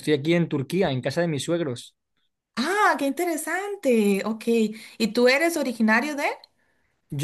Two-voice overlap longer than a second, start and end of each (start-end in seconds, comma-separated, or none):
none